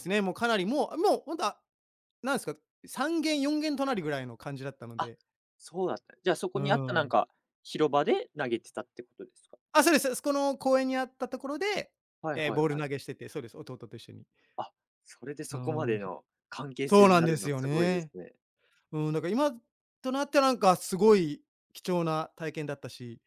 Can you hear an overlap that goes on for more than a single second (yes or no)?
yes